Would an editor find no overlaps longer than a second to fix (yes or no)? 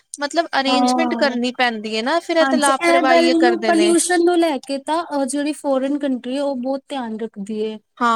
no